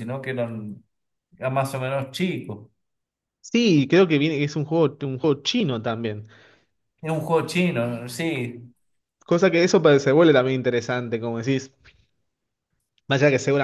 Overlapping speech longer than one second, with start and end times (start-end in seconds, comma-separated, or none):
none